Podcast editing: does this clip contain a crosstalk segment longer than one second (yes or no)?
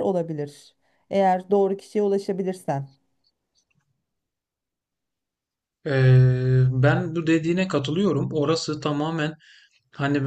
no